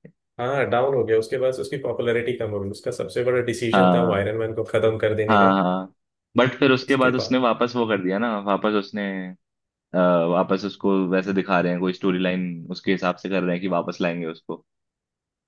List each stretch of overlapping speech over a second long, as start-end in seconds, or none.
none